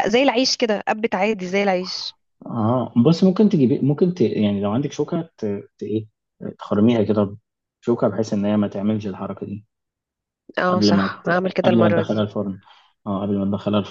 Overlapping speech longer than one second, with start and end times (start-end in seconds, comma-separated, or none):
10.7-12.3